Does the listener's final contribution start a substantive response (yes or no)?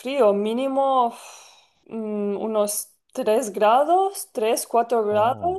no